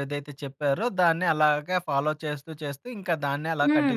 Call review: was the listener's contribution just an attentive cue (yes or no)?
no